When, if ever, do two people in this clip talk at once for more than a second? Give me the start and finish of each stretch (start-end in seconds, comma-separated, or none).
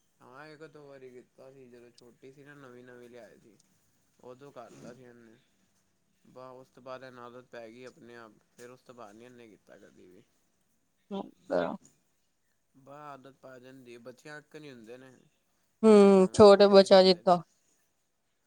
15.8-17.4